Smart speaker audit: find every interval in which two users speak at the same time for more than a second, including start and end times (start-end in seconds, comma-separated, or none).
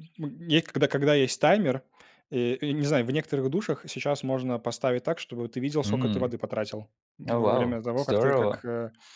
7.3-8.6